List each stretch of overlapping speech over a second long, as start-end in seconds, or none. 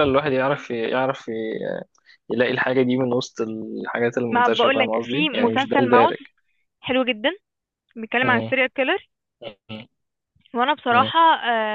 4.3-6.1